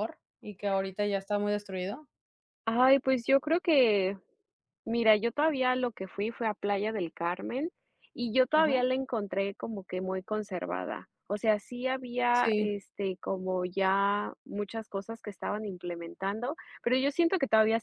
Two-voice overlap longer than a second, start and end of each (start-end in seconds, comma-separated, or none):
none